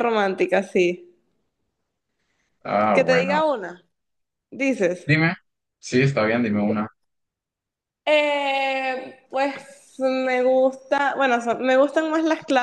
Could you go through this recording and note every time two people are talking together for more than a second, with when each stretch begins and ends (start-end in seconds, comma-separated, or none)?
none